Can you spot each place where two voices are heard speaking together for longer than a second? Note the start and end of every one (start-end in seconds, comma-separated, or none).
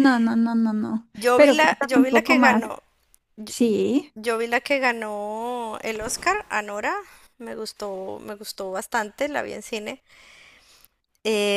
1.1-2.6